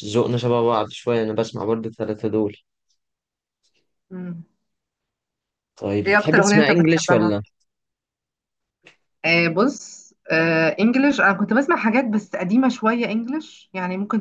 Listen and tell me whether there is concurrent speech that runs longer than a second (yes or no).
yes